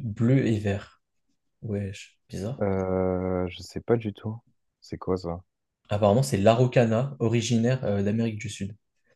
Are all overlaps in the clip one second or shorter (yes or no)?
yes